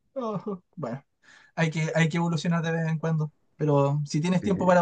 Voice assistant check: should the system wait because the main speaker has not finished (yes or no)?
yes